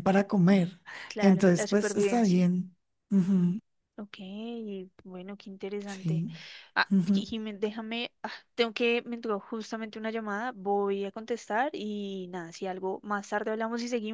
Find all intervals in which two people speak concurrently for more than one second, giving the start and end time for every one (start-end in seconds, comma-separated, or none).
1.2-2.4